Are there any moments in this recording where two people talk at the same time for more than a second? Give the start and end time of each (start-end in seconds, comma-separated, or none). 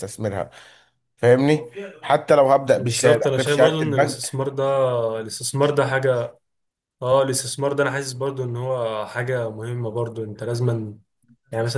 2.8-4.3